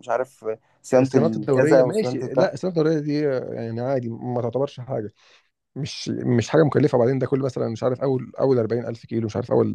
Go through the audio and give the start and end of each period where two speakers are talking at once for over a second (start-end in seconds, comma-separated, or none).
1.0-2.5